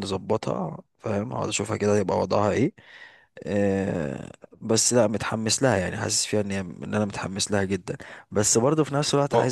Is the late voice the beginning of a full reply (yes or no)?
no